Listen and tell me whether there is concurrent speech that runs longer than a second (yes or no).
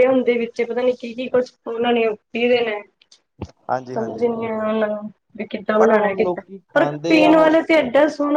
yes